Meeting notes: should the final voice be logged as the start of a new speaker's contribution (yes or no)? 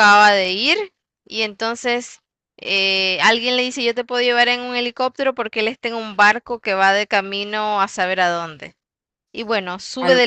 yes